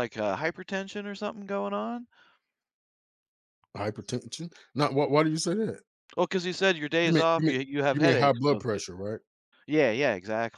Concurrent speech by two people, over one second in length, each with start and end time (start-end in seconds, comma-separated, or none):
7.1-8.8